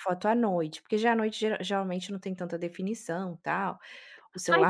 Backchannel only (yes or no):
no